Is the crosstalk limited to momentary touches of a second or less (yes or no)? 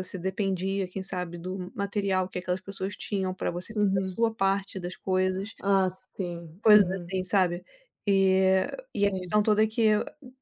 yes